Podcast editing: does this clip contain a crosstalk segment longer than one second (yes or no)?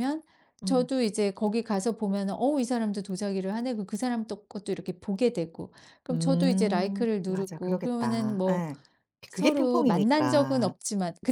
yes